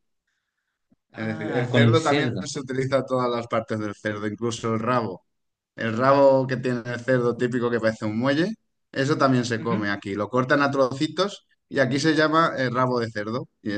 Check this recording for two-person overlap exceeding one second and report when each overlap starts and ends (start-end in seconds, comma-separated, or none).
1.1-2.4